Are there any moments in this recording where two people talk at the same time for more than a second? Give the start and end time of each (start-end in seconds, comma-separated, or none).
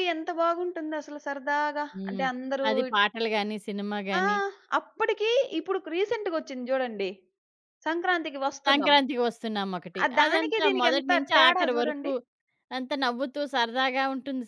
10.0-12.1